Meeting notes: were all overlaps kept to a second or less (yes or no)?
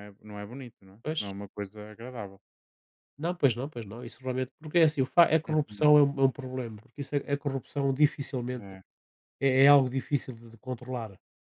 yes